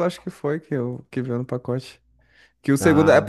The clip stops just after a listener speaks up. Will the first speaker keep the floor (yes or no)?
yes